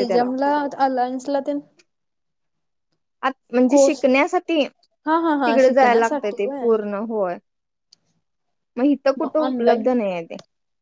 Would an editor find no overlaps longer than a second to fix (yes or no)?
no